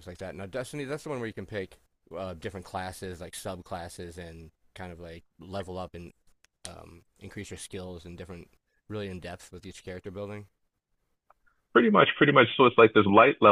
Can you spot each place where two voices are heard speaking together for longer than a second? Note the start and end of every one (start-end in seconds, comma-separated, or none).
none